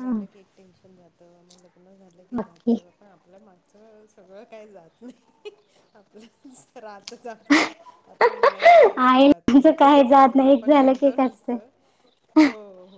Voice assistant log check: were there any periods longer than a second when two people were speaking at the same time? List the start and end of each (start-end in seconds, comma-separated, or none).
9.1-11.5